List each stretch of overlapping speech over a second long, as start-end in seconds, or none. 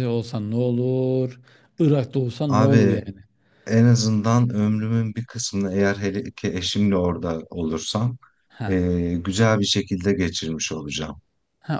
none